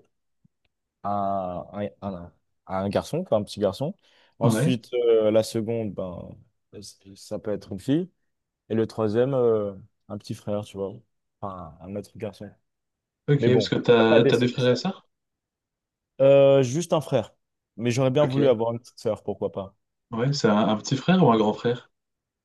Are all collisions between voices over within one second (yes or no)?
no